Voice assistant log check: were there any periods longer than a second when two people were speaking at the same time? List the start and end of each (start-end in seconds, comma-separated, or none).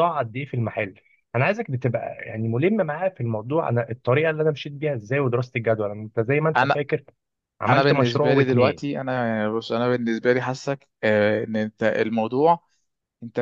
7.7-9.0